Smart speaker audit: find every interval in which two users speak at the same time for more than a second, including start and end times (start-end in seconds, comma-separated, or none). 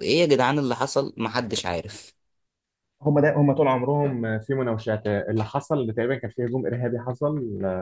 none